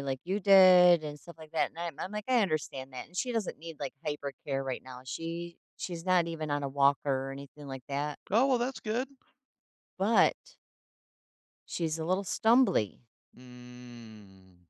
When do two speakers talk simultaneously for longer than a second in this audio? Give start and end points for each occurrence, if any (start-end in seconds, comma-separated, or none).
none